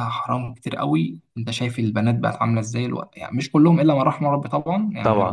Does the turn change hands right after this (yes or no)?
no